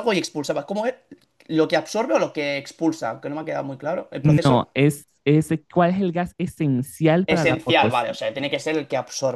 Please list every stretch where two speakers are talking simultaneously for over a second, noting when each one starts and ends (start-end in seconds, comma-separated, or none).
7.3-8.7